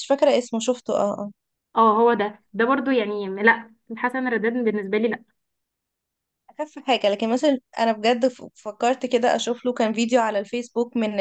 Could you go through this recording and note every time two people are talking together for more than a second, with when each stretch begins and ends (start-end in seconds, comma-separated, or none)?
none